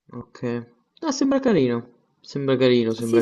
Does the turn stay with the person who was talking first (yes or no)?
no